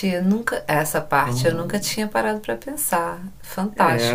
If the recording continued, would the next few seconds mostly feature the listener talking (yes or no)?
yes